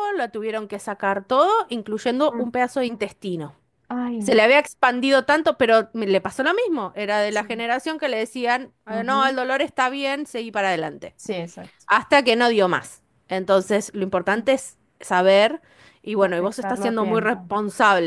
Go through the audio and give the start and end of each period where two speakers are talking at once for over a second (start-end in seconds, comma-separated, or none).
16.2-17.5